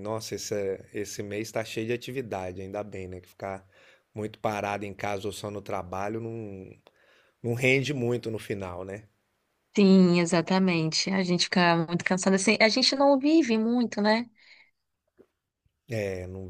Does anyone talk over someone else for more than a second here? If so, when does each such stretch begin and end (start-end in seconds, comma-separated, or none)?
none